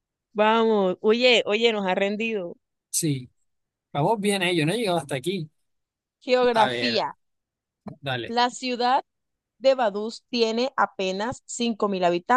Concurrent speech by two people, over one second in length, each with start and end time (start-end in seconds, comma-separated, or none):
none